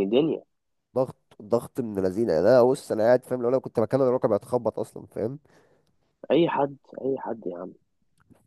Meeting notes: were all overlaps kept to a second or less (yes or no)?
yes